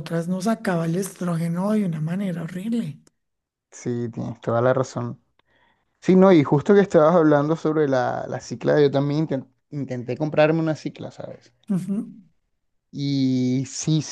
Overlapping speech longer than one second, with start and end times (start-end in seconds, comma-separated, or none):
none